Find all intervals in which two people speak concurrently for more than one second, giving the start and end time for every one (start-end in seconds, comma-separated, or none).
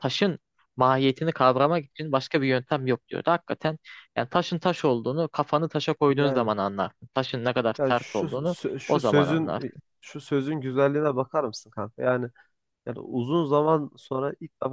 7.8-9.8